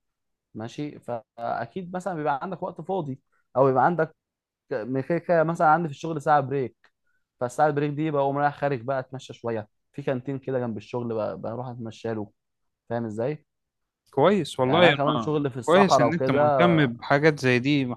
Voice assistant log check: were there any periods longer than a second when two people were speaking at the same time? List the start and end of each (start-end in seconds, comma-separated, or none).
14.6-16.7